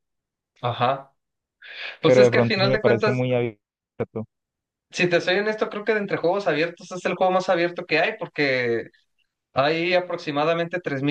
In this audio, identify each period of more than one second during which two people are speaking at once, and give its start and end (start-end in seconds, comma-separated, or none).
2.0-3.2